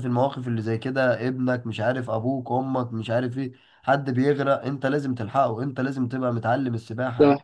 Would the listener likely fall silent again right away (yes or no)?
yes